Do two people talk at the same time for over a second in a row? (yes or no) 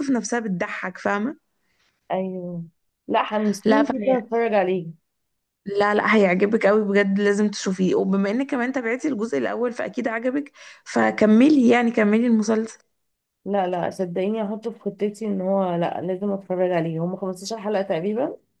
no